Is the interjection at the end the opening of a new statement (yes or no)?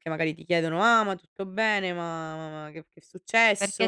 yes